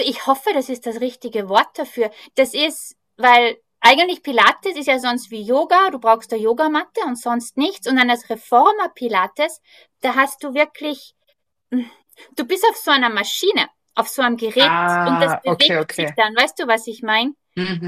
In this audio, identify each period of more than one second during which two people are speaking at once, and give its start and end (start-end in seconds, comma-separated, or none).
14.6-16.2